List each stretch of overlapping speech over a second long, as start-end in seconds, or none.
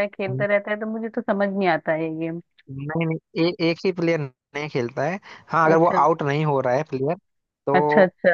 none